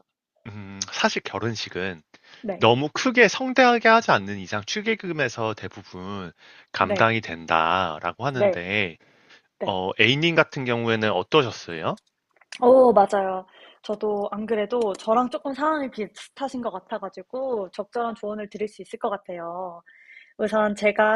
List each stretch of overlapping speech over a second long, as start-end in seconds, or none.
none